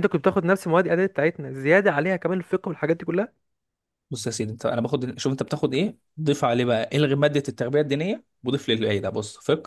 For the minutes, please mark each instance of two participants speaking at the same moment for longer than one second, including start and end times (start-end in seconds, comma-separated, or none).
none